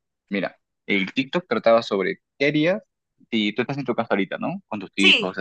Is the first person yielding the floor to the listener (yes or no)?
no